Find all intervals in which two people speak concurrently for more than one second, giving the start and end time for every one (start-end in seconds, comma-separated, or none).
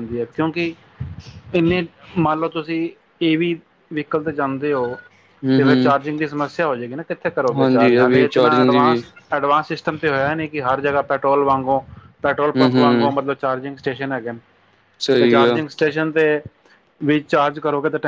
7.6-9.0